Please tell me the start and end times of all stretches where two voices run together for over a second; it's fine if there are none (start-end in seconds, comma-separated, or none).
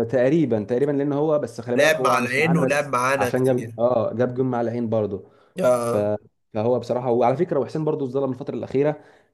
1.8-3.8